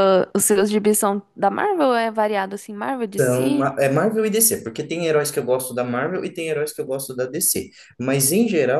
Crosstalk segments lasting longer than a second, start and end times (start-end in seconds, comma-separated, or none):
none